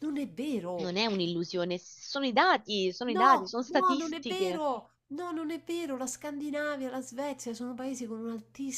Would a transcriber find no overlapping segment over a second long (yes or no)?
no